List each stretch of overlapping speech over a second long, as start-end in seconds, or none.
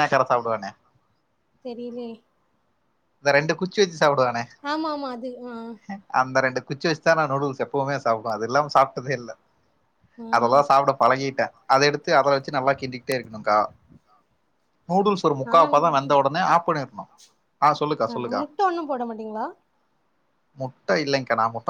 none